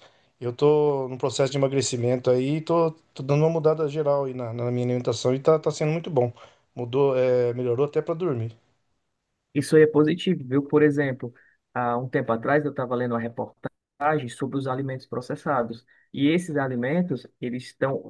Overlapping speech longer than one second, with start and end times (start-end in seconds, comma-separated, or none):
none